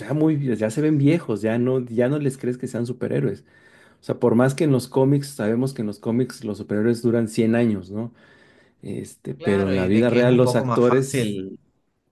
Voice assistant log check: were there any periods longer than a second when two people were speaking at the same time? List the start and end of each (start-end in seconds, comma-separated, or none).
9.4-11.4